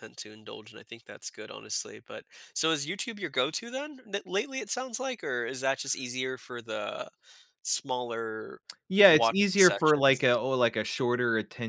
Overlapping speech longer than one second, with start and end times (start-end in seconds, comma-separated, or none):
9.1-10.4